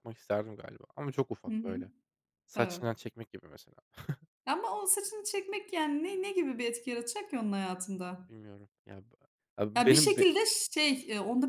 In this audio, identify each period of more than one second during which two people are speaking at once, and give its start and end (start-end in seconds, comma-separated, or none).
none